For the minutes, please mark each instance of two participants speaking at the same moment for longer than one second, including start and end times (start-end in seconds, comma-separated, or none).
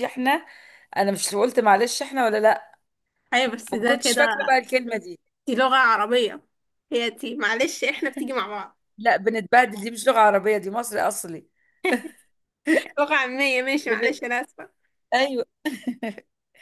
none